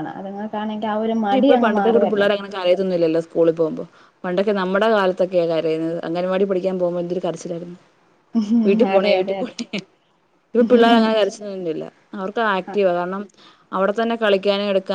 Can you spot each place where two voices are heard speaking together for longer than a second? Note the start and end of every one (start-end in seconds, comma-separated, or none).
none